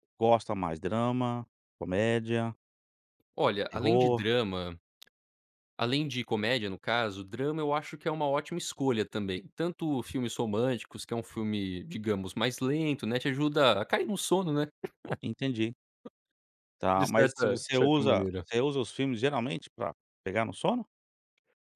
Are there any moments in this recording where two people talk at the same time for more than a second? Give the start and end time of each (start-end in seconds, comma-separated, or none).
16.9-18.4